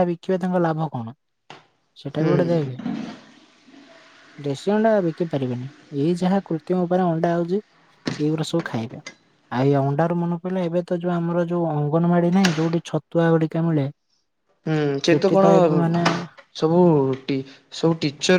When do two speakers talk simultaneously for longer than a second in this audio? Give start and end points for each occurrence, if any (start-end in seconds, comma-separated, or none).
none